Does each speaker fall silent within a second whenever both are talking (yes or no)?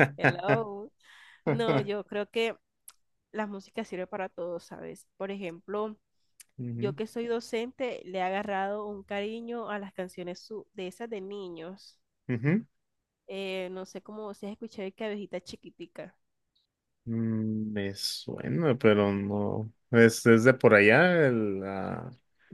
yes